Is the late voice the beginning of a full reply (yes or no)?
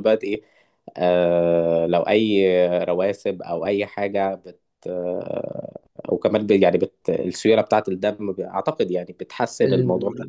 yes